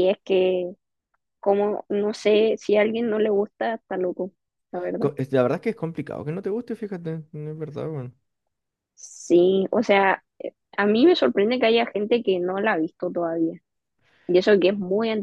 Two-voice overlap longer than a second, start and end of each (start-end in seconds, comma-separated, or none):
none